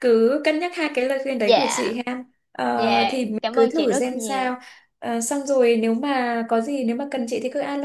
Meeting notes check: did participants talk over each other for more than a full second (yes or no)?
yes